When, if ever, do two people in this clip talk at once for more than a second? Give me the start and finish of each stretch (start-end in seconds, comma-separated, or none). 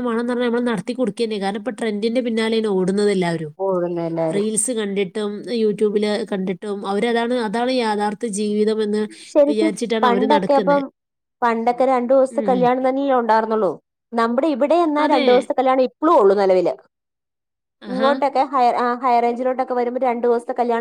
none